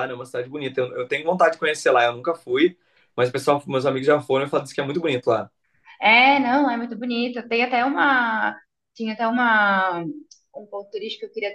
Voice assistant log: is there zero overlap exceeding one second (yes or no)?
yes